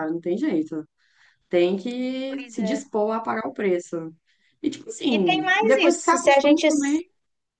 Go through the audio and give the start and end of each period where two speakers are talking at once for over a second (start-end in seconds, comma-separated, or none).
5.1-6.7